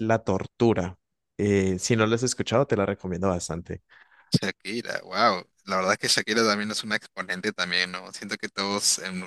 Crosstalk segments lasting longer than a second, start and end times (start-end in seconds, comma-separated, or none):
none